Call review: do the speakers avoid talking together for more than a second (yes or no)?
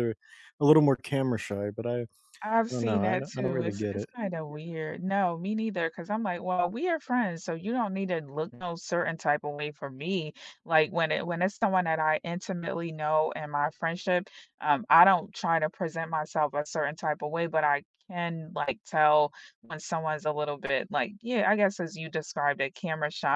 no